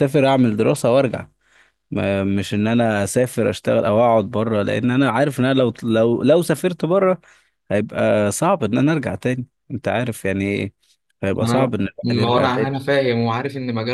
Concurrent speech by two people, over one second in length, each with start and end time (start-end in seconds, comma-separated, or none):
11.4-12.7